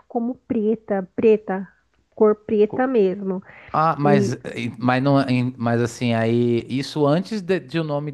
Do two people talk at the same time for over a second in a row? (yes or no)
no